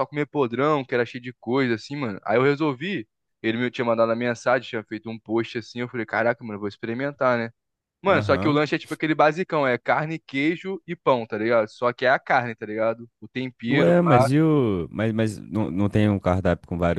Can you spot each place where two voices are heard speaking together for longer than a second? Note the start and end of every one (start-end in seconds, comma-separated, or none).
none